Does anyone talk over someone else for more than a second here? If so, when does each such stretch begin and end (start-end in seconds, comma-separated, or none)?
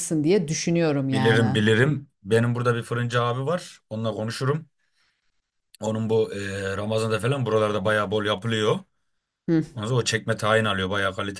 none